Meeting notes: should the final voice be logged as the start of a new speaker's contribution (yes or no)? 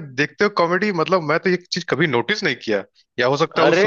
no